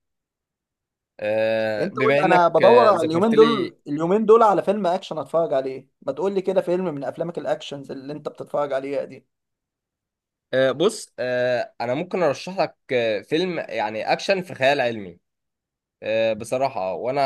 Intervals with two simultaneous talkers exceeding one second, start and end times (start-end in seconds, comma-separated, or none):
1.8-3.8